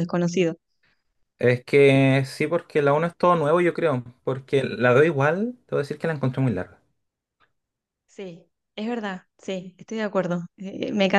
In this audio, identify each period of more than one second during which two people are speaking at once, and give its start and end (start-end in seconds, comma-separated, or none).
none